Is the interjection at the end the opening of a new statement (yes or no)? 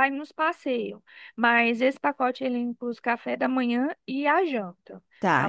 yes